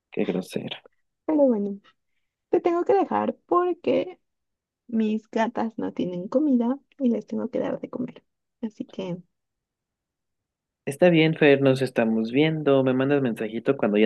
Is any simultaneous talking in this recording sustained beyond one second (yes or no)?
no